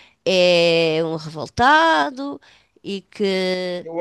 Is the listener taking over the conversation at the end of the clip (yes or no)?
yes